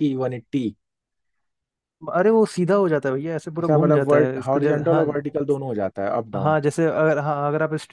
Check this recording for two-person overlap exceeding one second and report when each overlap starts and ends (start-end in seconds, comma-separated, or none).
3.6-5.0